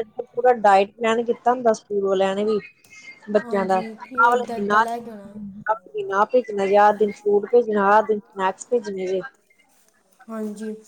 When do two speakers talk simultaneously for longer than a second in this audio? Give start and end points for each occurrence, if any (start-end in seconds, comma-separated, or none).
3.4-4.8